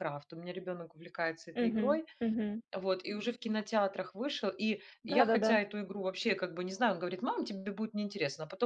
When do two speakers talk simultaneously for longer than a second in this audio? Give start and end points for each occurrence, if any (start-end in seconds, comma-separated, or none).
none